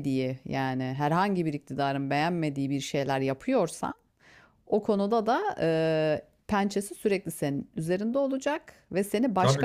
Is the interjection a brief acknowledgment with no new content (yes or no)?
yes